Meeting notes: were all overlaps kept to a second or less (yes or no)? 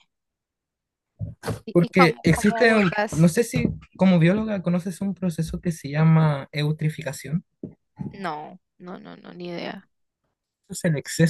no